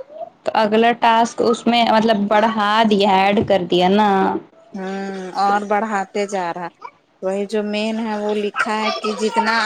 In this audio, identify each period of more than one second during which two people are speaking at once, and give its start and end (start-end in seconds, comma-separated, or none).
none